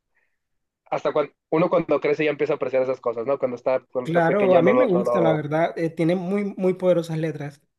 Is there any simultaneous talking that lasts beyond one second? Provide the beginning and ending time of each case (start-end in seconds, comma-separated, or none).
4.0-5.4